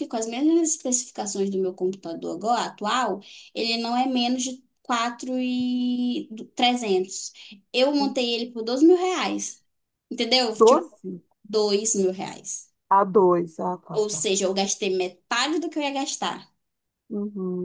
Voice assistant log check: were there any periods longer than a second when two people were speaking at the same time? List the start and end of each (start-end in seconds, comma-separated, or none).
none